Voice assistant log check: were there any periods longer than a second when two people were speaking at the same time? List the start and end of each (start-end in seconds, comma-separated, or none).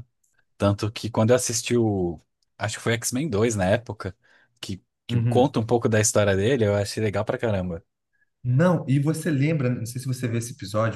none